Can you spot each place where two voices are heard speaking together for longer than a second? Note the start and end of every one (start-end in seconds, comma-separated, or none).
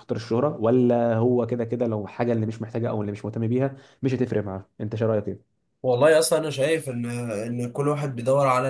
none